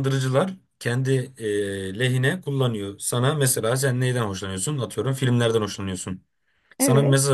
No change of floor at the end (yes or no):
yes